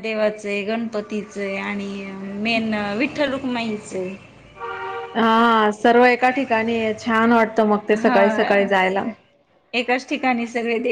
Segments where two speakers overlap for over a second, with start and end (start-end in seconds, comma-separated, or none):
none